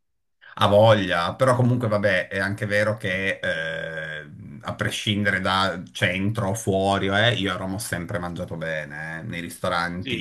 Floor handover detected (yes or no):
no